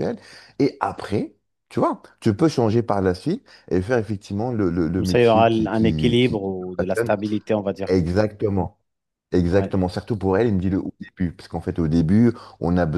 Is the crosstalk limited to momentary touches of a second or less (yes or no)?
no